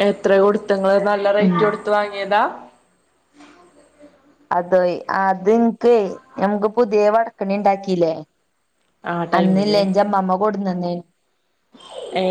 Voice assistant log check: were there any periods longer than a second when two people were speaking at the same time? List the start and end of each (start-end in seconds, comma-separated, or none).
none